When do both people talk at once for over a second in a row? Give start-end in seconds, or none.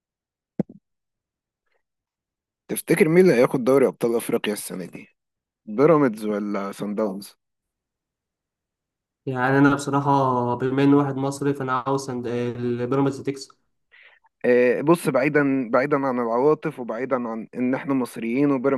none